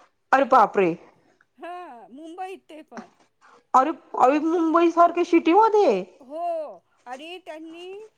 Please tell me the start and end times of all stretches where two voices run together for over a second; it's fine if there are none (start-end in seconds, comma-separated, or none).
none